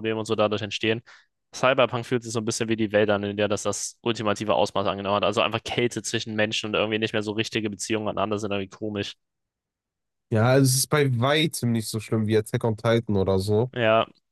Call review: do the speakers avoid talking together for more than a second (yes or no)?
yes